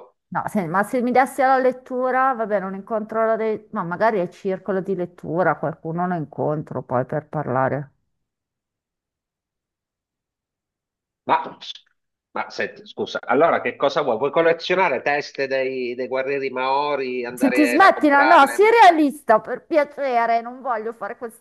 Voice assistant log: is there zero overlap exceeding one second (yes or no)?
no